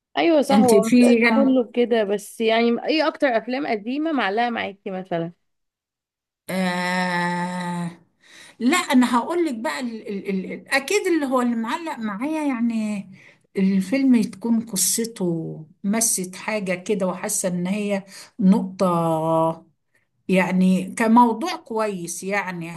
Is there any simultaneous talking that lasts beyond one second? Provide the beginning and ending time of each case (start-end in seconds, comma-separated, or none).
none